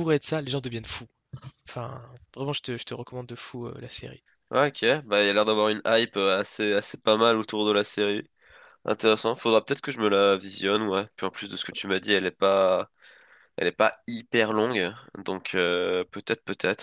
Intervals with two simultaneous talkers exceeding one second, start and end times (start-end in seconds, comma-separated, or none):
none